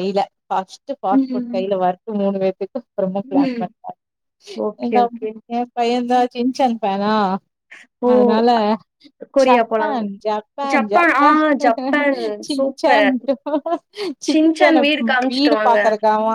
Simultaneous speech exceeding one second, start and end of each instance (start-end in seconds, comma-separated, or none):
14.3-15.8